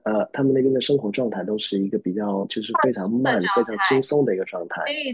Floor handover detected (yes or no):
yes